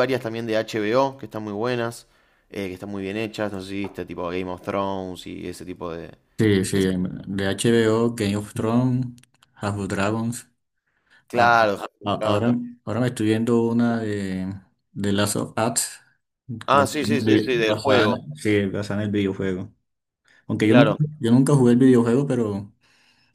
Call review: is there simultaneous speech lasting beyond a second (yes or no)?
yes